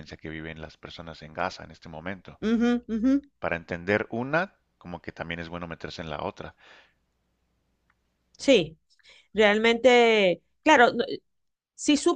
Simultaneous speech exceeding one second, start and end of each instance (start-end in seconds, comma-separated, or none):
none